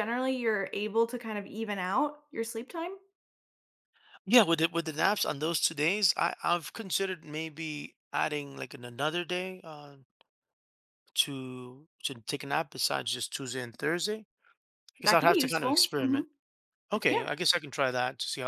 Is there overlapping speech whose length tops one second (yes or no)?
yes